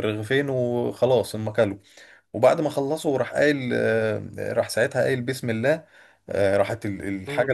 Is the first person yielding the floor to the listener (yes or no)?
no